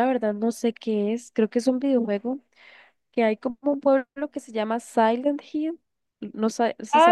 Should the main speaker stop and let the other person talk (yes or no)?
yes